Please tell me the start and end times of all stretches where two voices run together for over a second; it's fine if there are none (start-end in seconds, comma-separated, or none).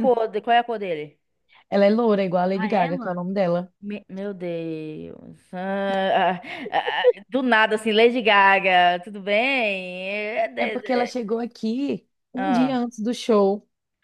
none